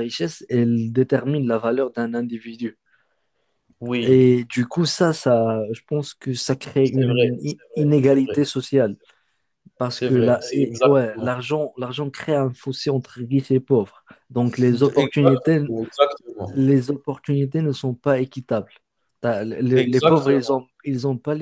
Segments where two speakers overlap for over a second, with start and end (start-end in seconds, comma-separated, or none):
6.8-8.6, 9.9-11.3